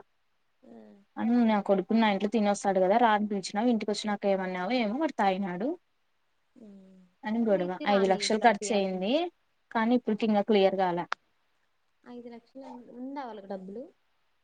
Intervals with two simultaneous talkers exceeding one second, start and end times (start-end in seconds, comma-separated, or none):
7.3-9.1